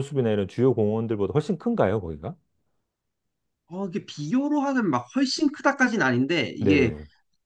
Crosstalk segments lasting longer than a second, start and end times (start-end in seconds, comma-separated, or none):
none